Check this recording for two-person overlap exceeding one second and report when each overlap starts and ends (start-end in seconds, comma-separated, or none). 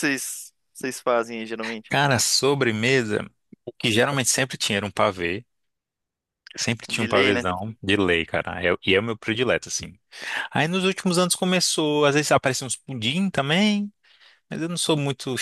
none